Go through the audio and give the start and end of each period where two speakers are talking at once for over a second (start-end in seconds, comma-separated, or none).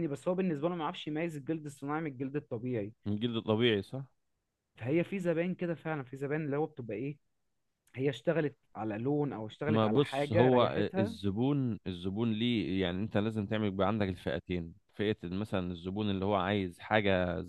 9.7-11.1